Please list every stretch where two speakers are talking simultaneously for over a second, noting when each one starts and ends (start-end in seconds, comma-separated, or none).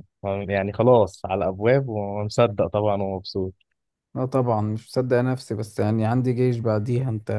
none